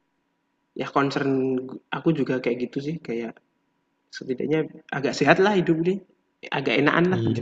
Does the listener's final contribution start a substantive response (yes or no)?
yes